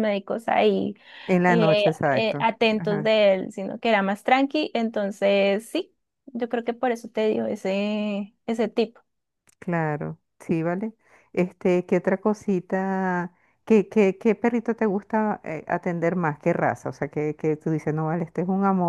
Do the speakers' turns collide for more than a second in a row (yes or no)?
yes